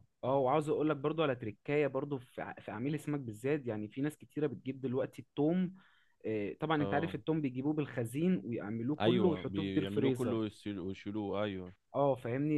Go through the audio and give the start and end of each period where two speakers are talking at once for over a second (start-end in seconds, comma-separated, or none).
9.0-10.4